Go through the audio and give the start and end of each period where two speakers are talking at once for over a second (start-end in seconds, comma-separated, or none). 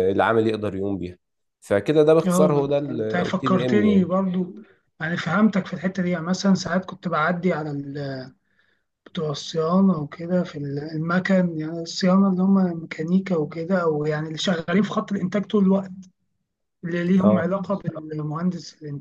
2.3-4.1